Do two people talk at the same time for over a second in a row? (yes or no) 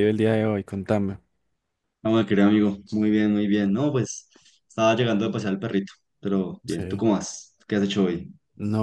no